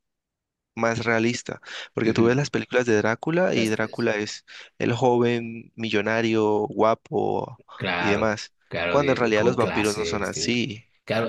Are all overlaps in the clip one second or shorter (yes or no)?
no